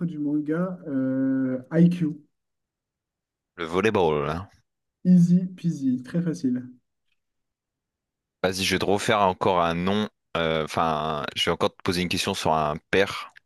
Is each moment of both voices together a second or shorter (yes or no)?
yes